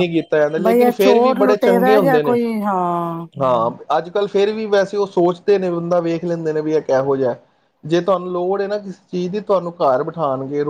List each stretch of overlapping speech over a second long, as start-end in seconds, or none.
0.6-2.3